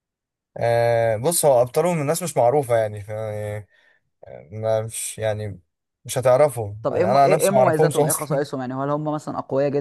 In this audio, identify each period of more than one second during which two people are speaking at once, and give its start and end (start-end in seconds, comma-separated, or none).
6.8-8.4